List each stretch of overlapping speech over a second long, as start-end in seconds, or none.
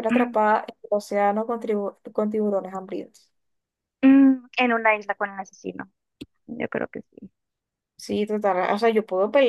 none